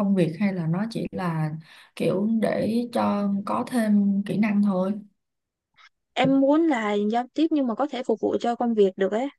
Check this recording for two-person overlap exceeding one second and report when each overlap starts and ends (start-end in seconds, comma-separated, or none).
none